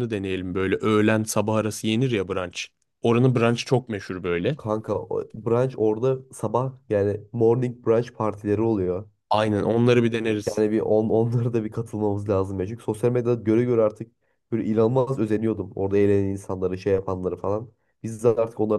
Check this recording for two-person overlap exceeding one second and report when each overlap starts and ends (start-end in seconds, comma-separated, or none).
none